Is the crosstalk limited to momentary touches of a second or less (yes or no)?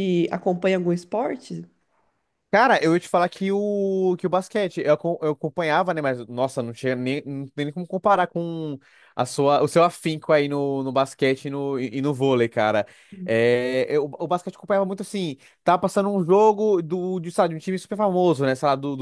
yes